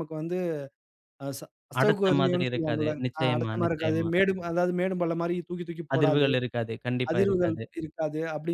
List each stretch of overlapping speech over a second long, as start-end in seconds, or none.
1.8-4.1